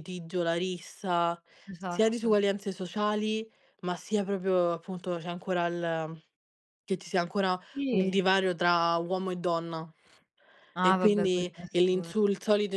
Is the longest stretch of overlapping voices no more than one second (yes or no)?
no